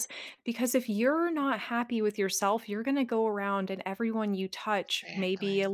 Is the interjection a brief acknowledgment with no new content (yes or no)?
yes